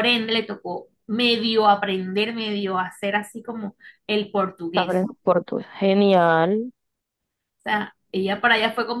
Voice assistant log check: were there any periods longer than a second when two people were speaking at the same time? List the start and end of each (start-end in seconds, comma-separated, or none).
none